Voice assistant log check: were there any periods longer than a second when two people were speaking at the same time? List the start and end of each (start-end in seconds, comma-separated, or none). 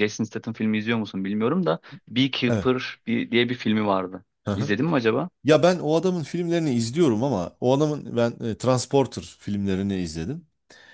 none